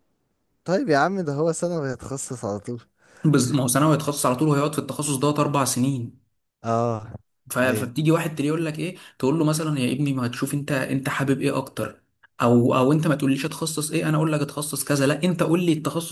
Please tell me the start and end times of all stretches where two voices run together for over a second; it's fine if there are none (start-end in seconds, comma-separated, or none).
none